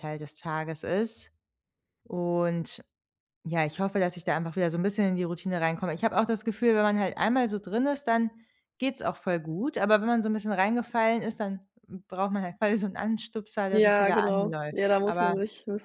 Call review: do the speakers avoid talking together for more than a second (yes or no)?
no